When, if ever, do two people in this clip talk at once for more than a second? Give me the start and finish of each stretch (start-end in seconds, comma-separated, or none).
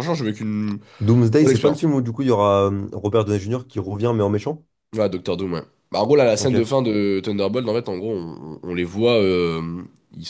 none